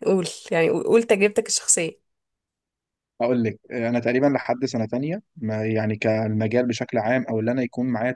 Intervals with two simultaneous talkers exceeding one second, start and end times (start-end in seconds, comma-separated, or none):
none